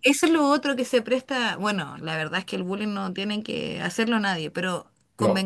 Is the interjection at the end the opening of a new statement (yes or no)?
no